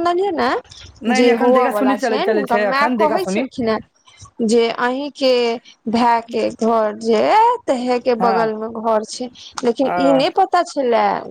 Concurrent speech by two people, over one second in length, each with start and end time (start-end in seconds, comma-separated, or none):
1.2-3.4